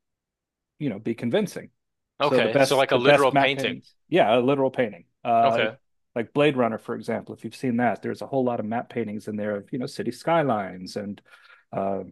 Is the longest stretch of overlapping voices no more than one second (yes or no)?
no